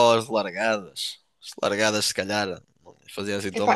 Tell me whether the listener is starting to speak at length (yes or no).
yes